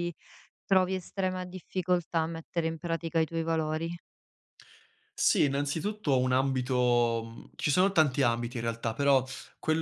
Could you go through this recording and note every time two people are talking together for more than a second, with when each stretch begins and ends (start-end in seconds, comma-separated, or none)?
none